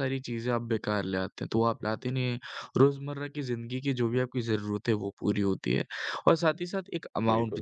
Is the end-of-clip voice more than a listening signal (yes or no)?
no